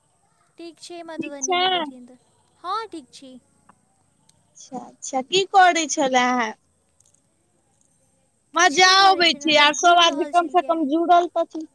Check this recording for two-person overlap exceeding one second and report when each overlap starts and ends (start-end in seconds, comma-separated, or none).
8.6-10.8